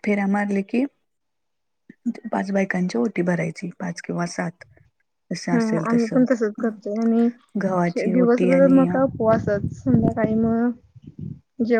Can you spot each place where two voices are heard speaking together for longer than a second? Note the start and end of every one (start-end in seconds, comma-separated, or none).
7.6-9.2